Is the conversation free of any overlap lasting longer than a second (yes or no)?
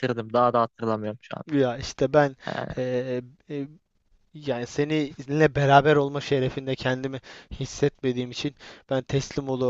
yes